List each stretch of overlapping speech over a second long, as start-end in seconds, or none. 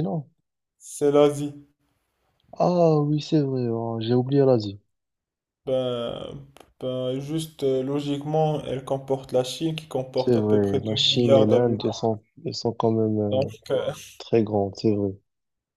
10.1-11.9